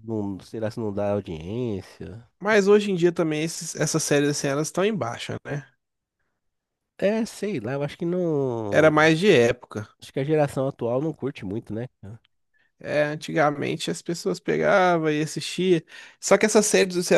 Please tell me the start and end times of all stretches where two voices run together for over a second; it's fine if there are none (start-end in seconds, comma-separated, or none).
none